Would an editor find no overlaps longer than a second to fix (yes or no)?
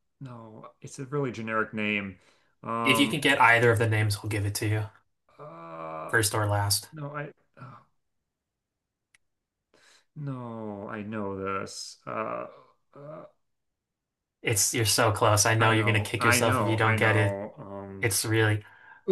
no